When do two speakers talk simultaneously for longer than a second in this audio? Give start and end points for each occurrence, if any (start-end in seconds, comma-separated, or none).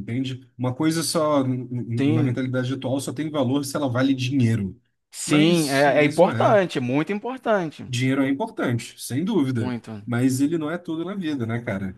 5.2-6.6